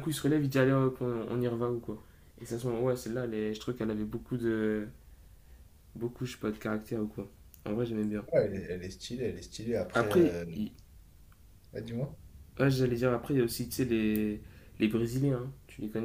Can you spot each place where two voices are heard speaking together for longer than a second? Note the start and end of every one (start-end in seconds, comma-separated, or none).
none